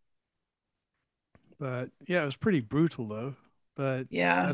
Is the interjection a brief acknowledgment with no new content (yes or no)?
yes